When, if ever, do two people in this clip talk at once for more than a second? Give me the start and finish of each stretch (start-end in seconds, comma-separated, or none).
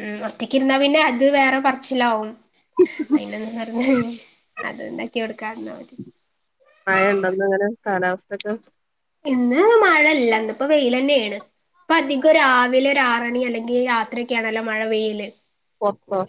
none